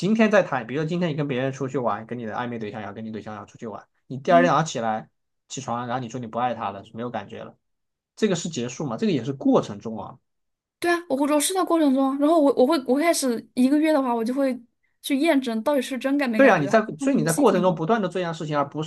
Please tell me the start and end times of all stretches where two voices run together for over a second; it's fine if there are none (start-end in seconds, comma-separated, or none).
16.4-17.8